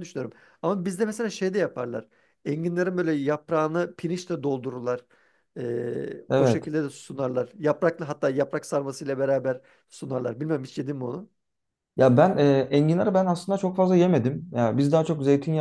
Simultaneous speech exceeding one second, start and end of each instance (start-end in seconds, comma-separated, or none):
none